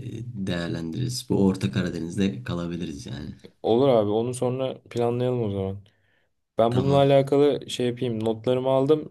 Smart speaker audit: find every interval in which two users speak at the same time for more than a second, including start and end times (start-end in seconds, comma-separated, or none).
none